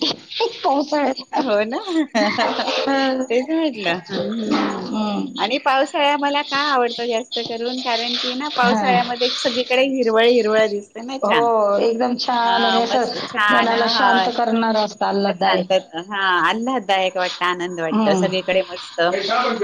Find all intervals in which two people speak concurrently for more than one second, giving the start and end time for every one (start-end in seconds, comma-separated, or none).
12.4-14.3